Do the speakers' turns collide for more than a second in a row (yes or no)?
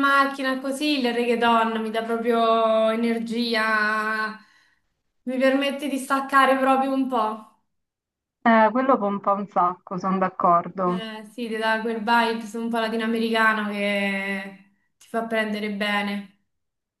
no